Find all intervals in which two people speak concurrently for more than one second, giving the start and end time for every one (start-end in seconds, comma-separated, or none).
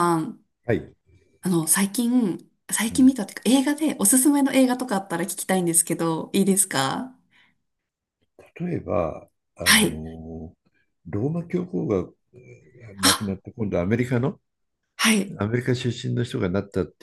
none